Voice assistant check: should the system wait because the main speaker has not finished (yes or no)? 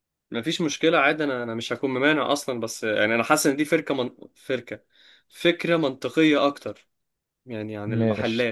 no